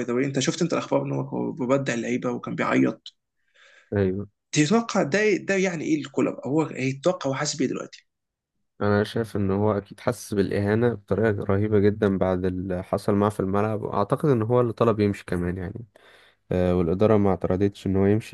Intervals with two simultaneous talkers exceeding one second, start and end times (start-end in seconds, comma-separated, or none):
none